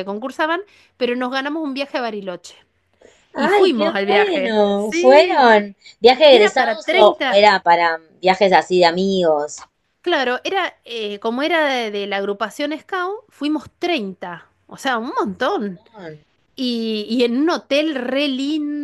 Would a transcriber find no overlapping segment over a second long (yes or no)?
no